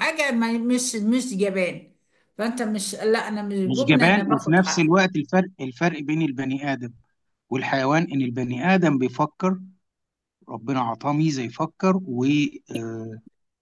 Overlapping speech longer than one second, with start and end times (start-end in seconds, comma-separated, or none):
3.6-4.9